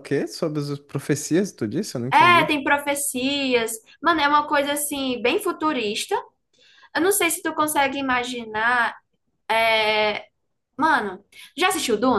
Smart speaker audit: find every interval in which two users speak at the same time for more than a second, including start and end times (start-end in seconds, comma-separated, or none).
none